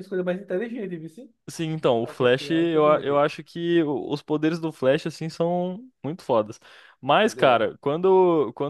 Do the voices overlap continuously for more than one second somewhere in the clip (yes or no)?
yes